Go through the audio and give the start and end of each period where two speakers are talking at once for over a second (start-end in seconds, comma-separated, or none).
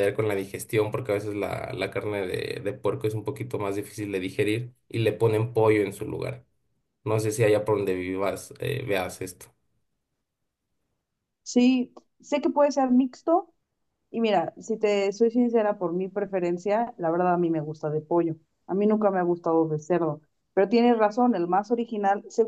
none